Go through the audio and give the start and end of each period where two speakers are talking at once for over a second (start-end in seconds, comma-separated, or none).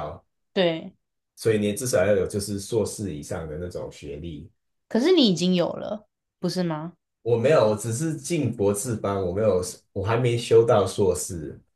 none